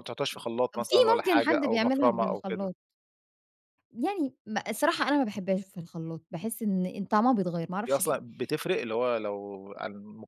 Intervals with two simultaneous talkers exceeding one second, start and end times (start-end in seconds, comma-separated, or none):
0.8-2.7